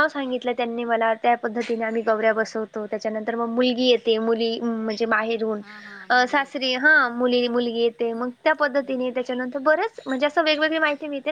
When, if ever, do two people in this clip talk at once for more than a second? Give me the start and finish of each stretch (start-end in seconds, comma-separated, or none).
5.6-7.3